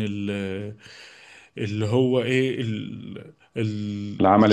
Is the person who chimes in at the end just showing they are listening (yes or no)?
yes